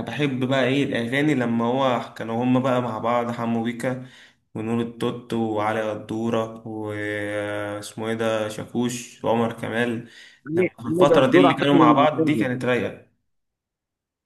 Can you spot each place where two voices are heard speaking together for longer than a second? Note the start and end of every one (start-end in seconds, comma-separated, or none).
10.5-12.5